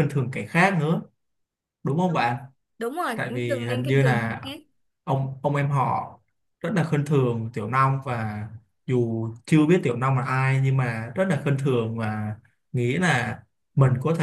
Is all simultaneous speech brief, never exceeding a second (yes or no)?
no